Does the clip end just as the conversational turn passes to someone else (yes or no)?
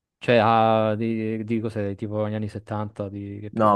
yes